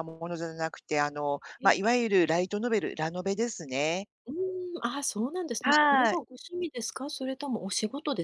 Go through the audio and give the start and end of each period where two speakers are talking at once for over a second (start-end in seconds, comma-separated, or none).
none